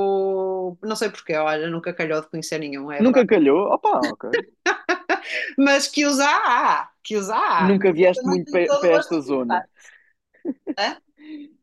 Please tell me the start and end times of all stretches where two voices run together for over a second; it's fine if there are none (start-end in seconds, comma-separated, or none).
7.7-9.6